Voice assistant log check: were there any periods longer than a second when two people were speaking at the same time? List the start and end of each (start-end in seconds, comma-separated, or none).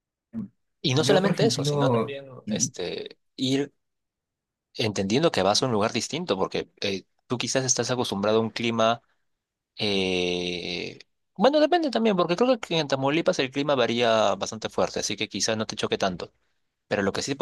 1.0-2.7